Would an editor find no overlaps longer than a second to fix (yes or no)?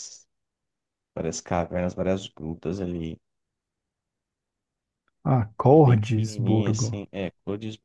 no